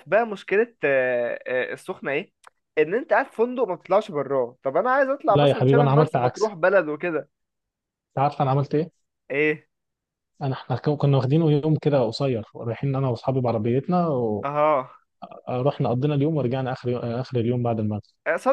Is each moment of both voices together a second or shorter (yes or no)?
no